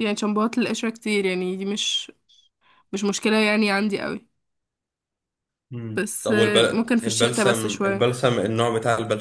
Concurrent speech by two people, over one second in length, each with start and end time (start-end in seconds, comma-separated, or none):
5.9-8.0